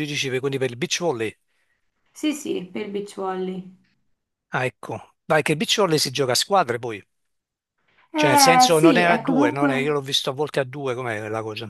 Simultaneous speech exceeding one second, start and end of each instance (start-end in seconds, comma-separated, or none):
8.1-9.9